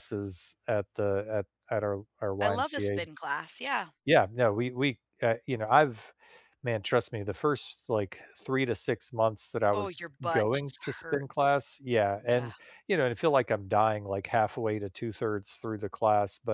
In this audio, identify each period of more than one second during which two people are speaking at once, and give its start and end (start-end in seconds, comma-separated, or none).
9.7-11.6